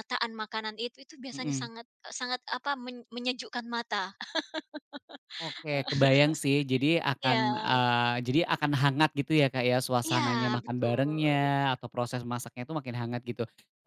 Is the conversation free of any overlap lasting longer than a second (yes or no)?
no